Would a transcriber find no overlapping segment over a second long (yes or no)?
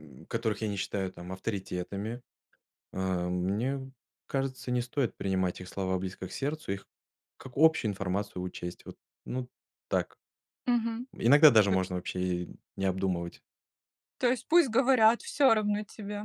yes